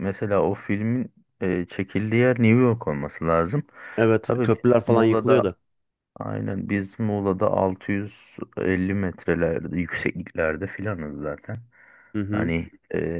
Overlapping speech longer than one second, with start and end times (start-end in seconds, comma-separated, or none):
4.2-5.5